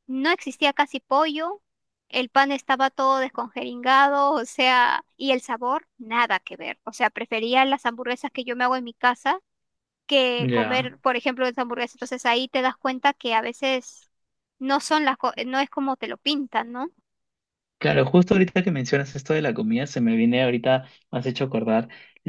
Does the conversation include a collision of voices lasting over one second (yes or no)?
no